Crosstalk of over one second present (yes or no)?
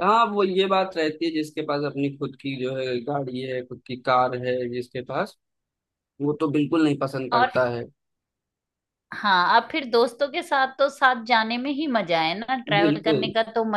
no